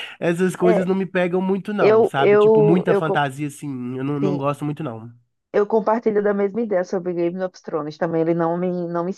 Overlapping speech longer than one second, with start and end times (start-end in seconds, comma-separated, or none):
1.8-3.2